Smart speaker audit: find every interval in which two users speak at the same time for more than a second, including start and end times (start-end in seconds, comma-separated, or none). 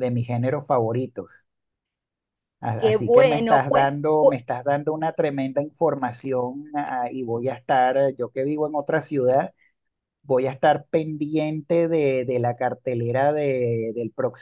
2.8-4.4